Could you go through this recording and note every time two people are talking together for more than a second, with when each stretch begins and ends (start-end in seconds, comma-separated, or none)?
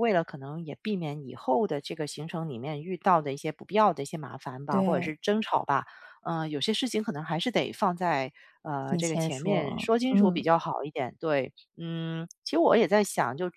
8.8-10.4